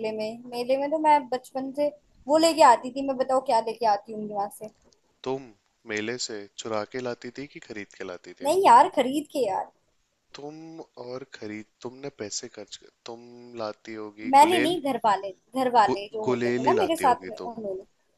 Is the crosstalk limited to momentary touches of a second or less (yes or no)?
no